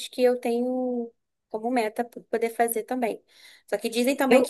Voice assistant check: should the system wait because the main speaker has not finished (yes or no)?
yes